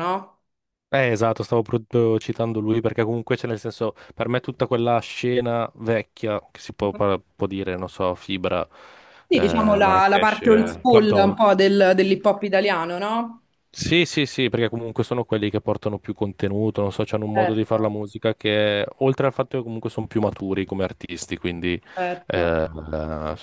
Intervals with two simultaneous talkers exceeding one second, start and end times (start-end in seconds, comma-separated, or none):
9.3-11.4